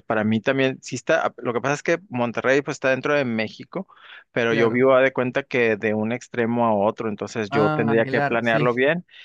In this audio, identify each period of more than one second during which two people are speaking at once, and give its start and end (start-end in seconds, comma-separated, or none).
7.5-8.7